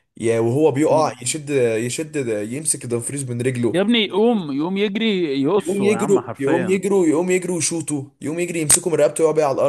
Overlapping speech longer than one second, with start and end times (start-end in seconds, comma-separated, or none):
5.6-6.8